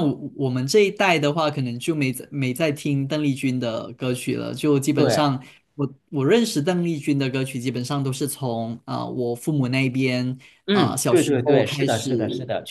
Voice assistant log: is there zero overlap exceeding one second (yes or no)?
no